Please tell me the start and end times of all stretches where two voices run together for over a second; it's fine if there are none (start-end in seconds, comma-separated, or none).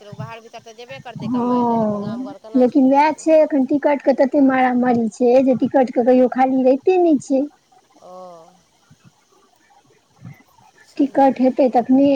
1.2-3.2